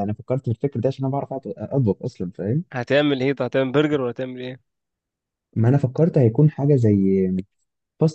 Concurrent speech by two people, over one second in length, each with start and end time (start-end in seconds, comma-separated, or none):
none